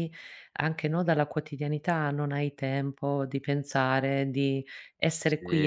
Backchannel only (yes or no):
no